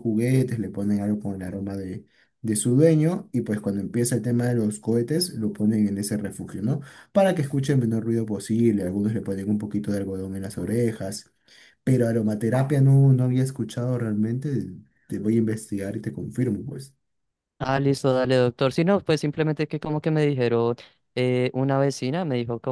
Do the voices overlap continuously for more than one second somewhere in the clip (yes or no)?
no